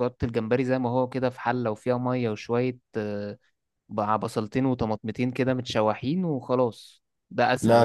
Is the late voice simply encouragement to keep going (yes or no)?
no